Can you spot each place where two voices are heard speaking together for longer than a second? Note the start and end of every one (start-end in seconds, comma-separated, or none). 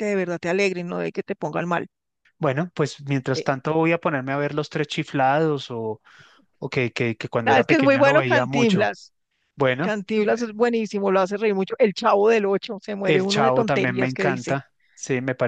7.5-8.9, 13.0-14.6